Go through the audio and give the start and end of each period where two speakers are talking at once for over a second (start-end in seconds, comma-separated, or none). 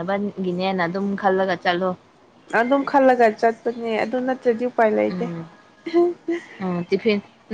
none